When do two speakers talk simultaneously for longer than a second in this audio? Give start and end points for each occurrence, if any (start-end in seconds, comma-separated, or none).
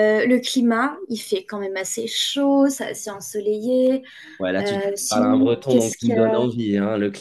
4.6-6.1